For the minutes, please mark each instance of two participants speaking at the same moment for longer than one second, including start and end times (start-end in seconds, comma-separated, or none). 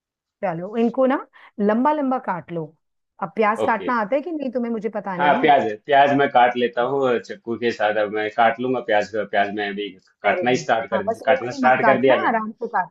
10.2-12.4